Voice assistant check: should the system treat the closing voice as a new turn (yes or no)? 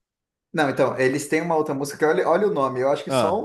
no